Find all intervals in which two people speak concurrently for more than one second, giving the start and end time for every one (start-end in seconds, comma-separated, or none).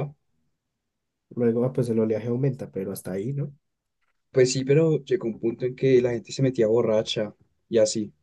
none